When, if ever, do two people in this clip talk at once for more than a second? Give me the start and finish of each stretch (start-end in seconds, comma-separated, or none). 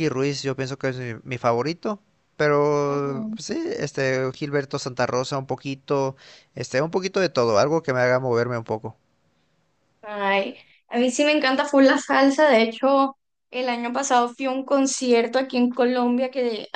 none